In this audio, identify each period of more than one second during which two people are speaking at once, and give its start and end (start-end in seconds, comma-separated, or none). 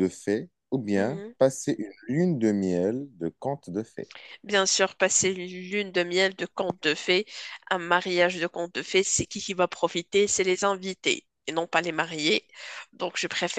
none